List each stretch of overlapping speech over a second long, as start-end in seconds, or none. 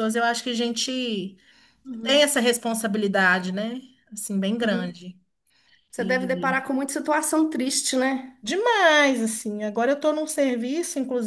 none